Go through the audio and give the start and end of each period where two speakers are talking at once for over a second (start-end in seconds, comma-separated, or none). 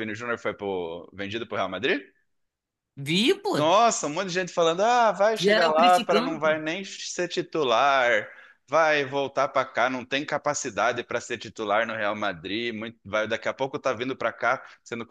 5.3-6.6